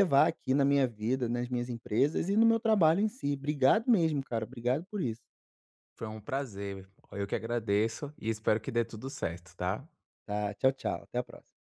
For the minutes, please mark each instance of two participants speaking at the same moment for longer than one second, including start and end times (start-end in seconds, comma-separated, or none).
none